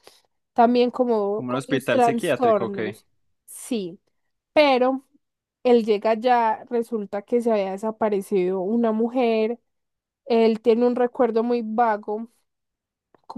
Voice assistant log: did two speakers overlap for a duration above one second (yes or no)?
yes